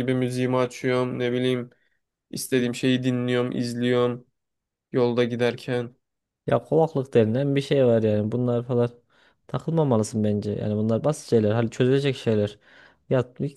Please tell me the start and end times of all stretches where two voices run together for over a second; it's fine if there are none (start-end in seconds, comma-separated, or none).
none